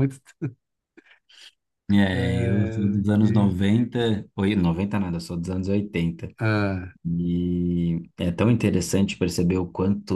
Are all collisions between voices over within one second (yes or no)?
no